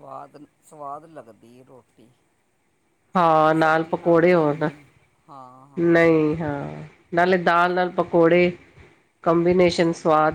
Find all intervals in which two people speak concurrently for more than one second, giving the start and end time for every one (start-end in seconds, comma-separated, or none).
3.1-4.7